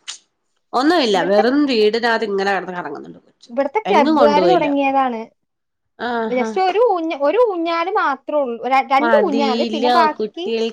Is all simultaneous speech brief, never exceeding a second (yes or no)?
yes